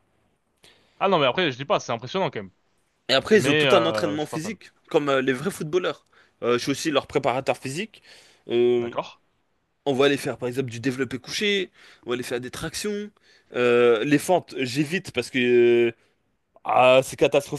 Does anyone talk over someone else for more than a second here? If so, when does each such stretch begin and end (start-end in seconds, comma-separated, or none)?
3.3-4.6